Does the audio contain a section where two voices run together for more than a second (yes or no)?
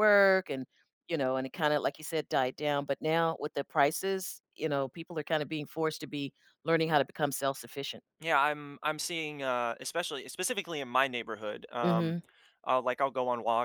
no